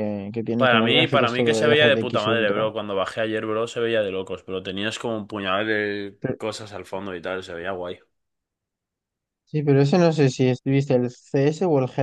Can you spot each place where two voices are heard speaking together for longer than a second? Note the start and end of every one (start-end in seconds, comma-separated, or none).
0.6-2.6